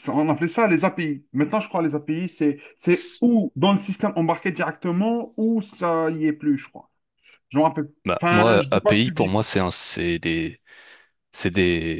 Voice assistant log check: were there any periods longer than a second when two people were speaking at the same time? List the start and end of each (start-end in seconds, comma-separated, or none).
8.0-9.5